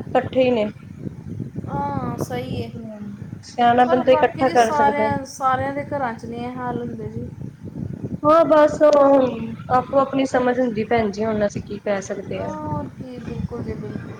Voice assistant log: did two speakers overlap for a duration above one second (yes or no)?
yes